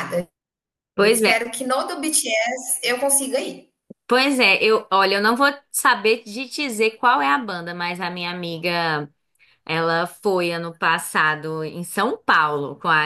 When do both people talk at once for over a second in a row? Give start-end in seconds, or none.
none